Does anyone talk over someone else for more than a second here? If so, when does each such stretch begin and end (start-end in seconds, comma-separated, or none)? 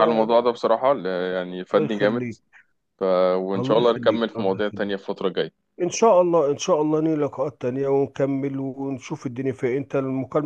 3.6-5.0